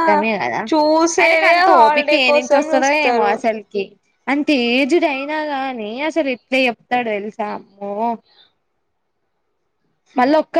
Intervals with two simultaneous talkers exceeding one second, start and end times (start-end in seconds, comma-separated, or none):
1.2-3.3